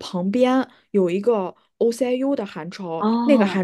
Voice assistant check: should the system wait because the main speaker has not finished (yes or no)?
yes